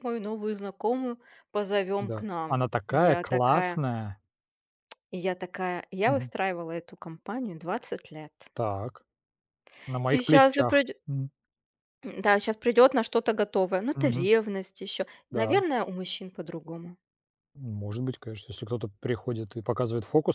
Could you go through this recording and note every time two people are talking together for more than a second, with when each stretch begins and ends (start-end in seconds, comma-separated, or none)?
2.0-3.8